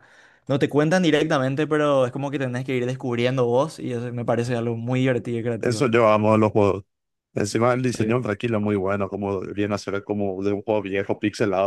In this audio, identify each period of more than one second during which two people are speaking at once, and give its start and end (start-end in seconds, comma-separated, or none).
none